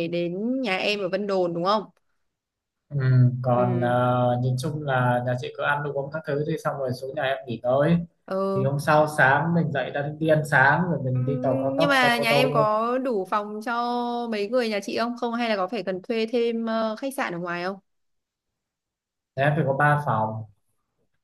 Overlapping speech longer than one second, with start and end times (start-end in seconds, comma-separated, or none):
11.1-12.7